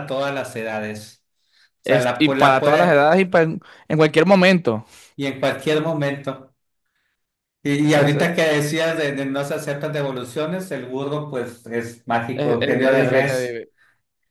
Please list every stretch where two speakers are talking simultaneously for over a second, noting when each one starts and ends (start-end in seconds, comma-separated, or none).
1.8-3.2, 12.3-13.6